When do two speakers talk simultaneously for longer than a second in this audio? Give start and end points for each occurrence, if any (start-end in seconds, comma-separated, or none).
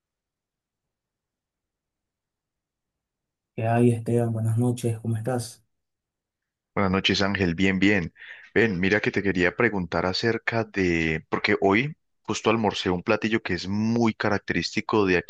none